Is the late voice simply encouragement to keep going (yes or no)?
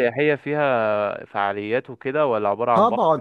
no